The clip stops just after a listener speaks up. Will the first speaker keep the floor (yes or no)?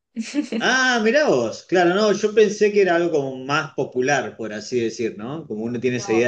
yes